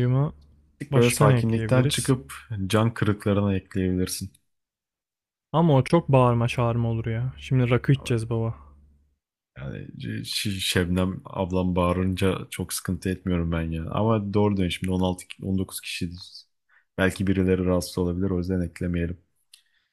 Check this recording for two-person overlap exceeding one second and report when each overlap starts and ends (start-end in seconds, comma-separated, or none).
0.9-2.2